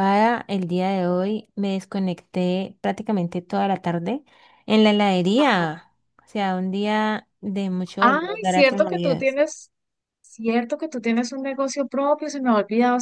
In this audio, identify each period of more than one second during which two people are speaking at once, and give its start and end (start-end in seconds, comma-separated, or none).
8.0-9.4